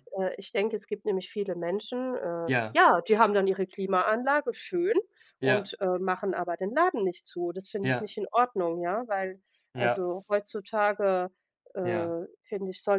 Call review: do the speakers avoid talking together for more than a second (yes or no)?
yes